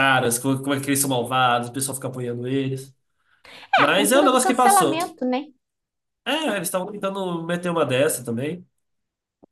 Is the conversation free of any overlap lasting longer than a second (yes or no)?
no